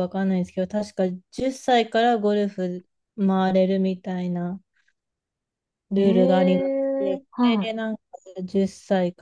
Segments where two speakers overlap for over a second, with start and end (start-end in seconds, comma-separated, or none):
6.0-7.7